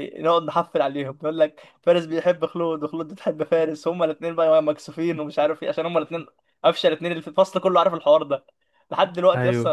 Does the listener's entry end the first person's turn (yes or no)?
no